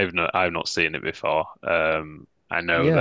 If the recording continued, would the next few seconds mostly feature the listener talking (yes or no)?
yes